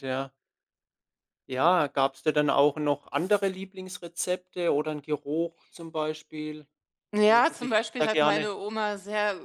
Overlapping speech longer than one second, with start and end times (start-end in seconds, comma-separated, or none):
7.2-8.5